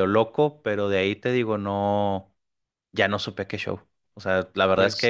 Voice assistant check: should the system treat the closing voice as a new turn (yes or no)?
no